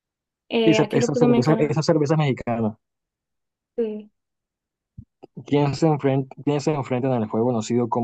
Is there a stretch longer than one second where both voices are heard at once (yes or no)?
yes